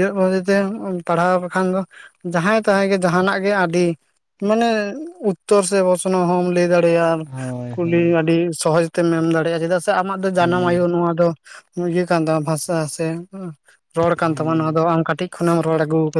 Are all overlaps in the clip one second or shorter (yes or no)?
yes